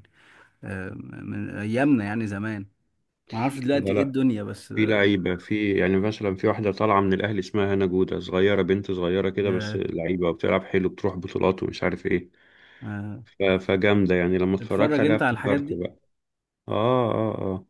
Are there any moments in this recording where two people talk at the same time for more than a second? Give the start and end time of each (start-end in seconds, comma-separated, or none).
14.6-15.8